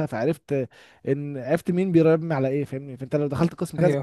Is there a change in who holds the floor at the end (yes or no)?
no